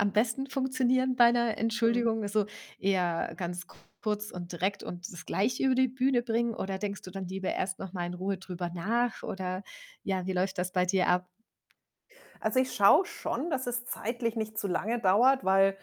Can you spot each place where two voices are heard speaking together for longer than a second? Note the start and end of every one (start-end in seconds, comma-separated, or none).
none